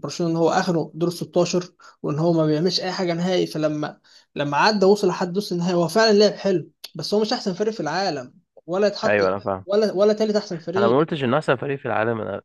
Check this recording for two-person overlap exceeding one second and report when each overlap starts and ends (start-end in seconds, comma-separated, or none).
none